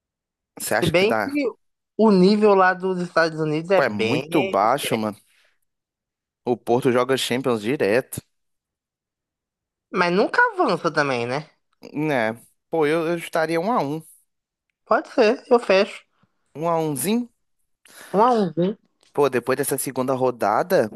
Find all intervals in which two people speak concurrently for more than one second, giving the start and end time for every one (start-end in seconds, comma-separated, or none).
3.7-5.0